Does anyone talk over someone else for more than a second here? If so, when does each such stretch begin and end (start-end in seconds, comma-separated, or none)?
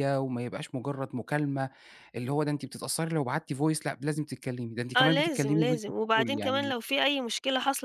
5.0-6.7